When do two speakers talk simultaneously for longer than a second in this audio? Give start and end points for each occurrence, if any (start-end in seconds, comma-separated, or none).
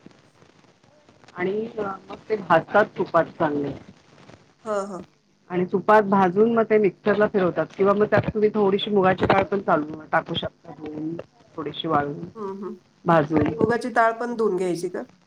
none